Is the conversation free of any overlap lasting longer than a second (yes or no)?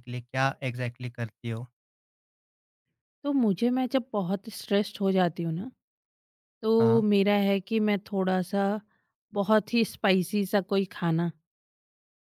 yes